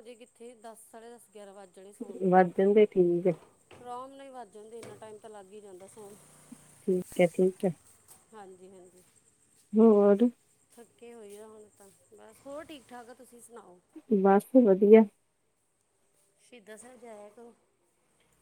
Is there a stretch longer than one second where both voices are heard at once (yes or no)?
no